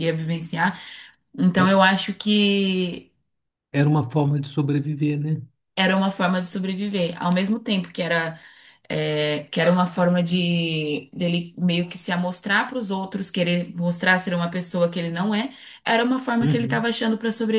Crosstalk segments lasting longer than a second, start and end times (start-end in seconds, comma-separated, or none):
none